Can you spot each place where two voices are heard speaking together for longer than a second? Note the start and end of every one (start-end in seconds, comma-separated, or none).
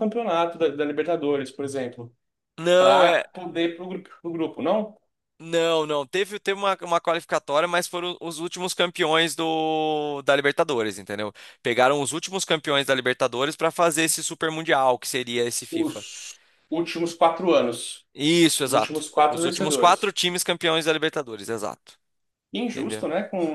18.7-20.1